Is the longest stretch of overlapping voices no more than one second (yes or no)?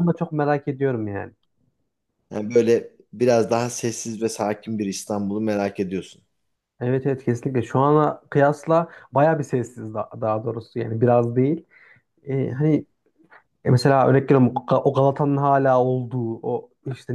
yes